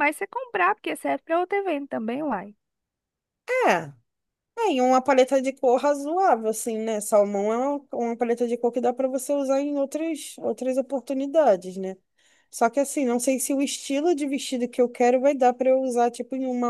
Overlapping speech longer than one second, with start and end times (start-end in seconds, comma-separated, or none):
none